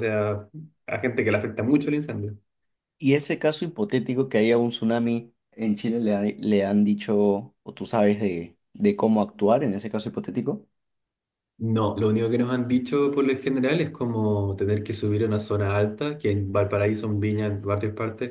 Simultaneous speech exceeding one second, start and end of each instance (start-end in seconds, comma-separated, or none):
none